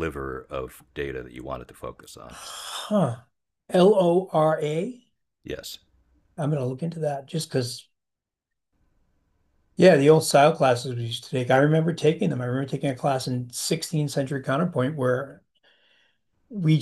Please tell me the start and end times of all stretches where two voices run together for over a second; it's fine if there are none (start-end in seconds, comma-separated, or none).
none